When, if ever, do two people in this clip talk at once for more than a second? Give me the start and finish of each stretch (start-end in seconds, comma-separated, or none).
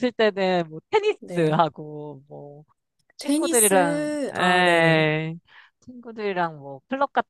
3.2-5.1